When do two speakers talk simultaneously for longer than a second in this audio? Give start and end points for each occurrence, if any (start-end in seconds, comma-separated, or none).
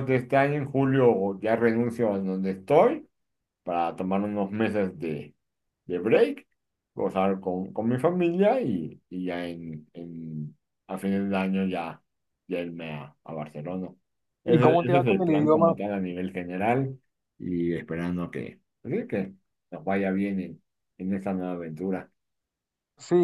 14.5-15.8